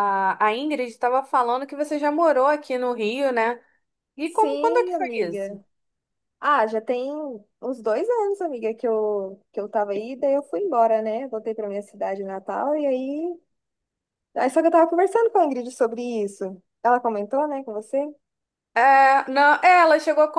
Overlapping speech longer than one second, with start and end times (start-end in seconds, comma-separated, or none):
4.2-5.6